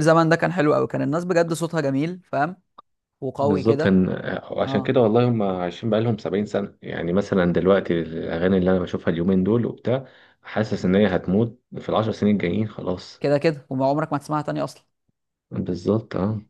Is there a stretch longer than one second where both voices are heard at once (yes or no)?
no